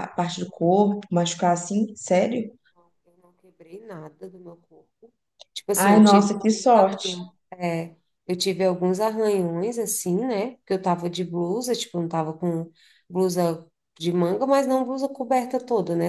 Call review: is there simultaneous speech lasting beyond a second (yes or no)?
yes